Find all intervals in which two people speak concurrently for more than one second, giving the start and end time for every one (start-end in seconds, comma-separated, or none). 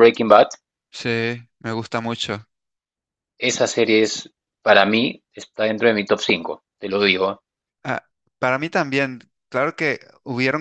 none